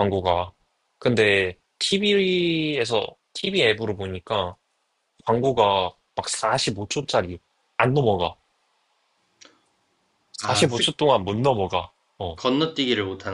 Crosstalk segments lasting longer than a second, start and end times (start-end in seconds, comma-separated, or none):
none